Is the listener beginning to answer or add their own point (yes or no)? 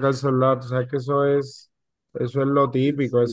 yes